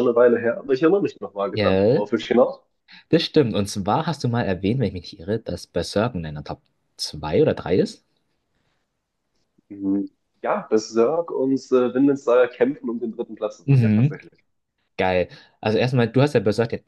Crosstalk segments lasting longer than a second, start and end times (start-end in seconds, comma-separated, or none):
none